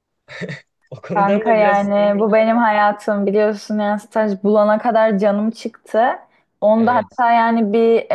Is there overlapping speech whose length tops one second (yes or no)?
yes